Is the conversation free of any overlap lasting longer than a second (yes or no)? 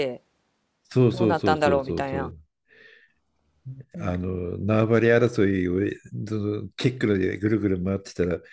no